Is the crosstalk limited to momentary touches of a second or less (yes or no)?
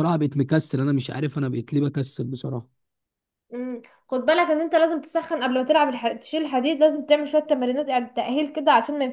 yes